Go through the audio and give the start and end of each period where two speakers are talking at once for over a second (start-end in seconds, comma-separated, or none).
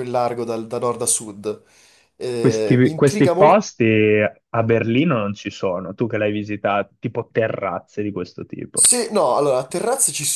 2.4-3.7